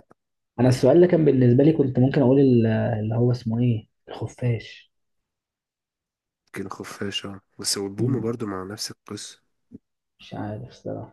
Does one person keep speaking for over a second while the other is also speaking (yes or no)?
no